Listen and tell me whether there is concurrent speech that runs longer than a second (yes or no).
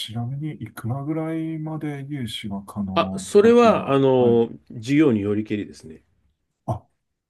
yes